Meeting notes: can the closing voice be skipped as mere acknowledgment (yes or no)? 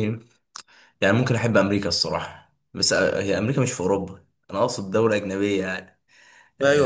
no